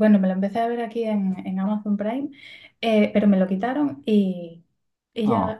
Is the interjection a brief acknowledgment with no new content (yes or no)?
yes